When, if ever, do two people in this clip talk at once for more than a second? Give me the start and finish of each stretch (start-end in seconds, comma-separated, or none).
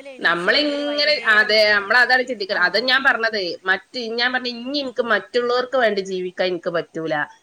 none